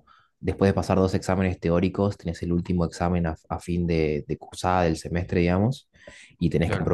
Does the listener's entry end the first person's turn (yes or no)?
no